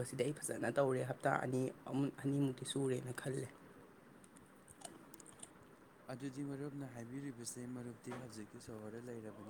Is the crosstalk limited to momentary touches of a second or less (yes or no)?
yes